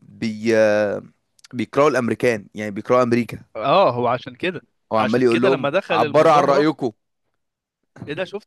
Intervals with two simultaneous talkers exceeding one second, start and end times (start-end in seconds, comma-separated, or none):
5.0-6.7